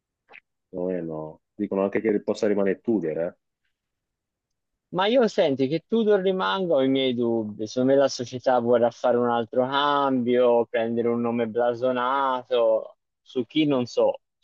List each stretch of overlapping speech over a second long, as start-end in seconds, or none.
none